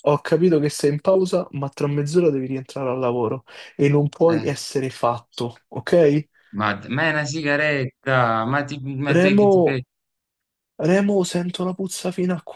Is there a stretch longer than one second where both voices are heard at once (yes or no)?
no